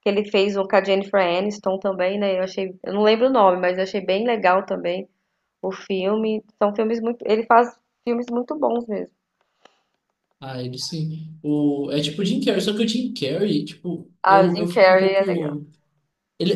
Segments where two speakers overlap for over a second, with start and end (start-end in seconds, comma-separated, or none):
14.2-15.5